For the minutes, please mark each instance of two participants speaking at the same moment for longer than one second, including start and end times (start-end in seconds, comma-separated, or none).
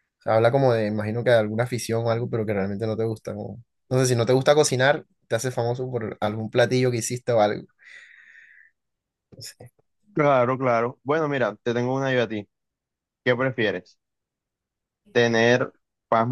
none